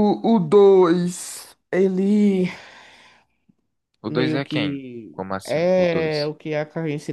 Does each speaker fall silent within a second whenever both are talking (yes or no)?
no